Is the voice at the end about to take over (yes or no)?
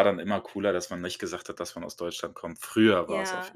yes